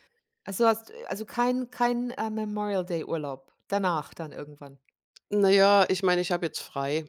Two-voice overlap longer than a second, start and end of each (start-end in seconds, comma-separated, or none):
none